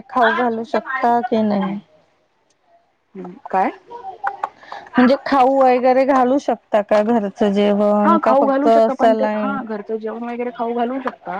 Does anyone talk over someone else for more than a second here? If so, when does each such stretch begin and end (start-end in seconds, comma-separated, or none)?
none